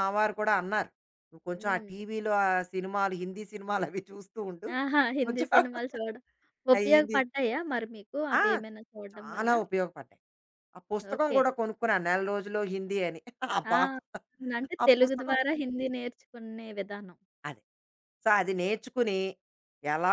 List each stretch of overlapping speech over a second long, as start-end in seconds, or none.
none